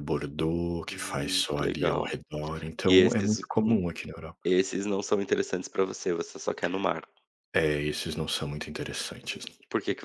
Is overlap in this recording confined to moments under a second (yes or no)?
no